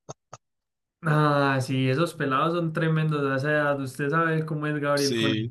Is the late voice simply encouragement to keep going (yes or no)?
no